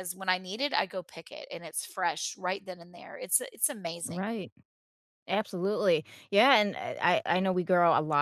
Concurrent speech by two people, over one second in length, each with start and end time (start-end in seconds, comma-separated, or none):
none